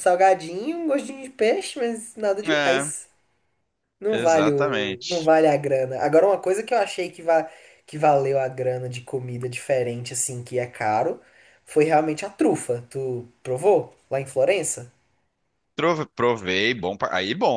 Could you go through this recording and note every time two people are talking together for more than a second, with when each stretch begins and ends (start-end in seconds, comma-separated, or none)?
4.1-5.3